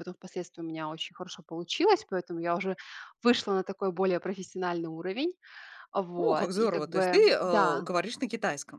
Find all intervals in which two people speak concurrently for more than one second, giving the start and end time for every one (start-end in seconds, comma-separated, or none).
6.2-7.8